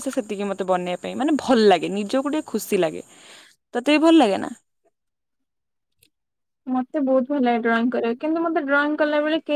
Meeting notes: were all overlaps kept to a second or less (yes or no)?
yes